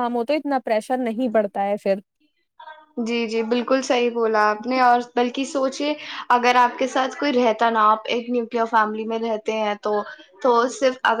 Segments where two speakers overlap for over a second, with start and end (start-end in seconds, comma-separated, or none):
none